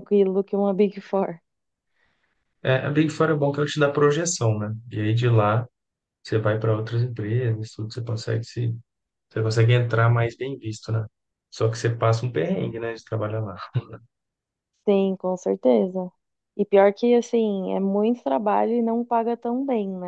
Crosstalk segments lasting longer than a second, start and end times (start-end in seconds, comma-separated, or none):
none